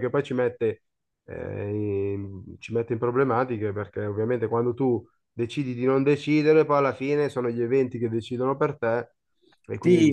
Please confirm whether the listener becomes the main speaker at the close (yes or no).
yes